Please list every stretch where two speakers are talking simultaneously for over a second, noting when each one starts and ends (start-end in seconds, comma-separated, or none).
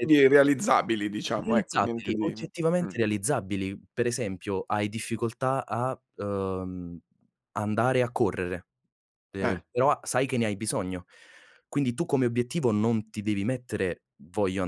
1.4-2.9